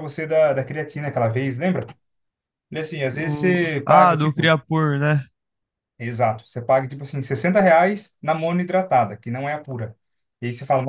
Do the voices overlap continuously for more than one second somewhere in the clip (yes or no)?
yes